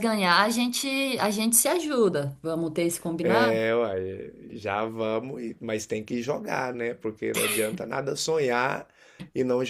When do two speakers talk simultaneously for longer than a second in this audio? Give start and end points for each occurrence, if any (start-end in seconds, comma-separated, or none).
none